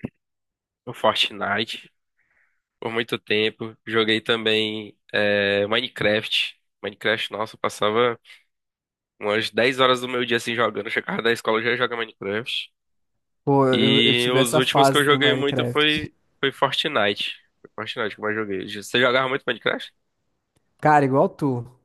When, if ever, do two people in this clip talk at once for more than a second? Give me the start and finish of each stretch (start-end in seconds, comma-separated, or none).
13.7-16.1